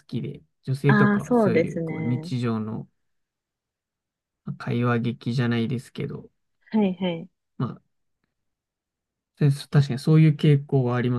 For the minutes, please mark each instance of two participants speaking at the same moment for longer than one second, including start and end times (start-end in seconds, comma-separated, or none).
0.9-2.3